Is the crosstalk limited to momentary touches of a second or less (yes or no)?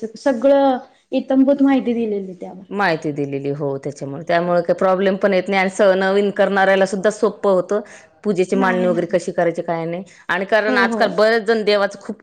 yes